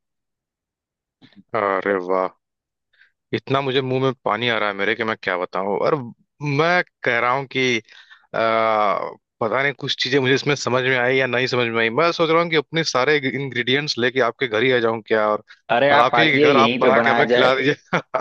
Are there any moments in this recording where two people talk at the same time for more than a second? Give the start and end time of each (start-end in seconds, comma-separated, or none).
15.9-17.5